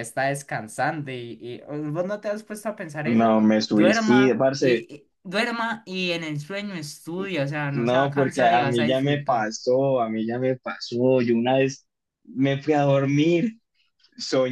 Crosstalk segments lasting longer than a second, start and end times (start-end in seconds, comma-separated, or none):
3.0-4.9, 7.7-9.5